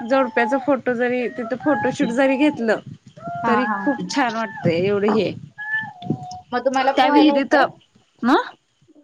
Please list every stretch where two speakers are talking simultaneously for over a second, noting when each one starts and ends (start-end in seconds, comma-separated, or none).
none